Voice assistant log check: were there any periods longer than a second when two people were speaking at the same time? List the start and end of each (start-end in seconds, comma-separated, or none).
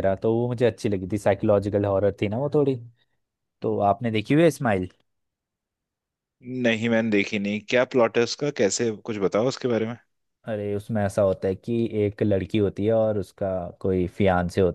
none